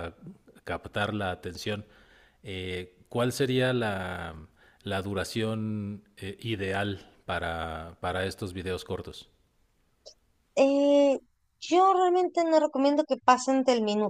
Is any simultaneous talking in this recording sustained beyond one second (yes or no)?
no